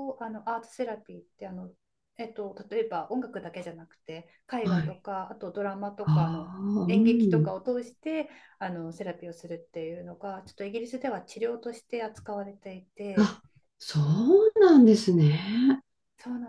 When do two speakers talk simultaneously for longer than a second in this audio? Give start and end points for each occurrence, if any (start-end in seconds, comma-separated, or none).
6.0-7.5